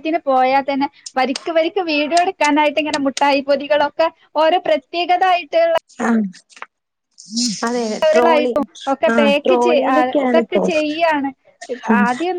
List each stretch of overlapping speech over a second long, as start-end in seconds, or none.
none